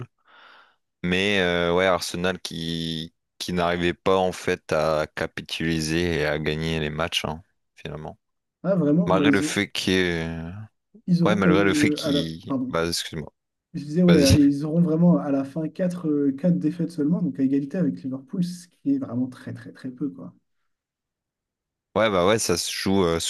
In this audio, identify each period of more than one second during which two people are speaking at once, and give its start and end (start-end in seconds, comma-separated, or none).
11.2-12.8